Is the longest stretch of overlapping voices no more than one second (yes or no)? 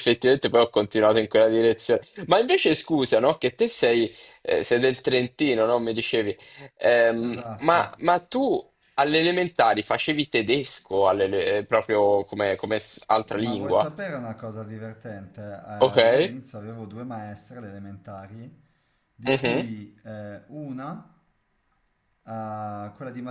yes